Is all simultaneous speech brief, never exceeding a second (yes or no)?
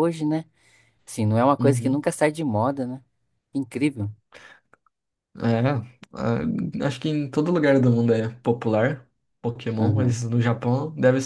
yes